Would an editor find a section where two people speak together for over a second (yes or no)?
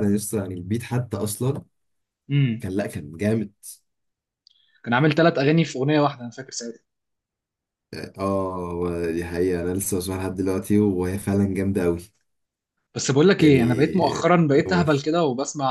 no